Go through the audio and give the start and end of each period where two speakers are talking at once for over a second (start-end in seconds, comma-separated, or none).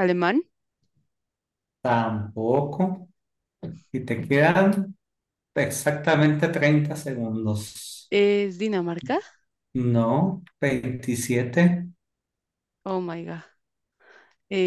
none